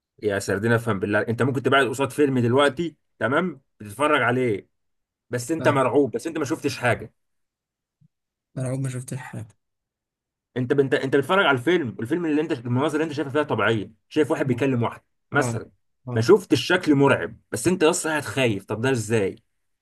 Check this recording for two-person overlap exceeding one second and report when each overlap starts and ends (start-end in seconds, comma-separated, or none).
none